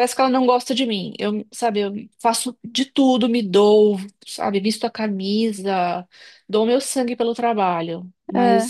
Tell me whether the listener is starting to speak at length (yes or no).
no